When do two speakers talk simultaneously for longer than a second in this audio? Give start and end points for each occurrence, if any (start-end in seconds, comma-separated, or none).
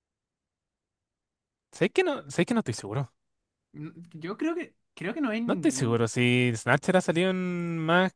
none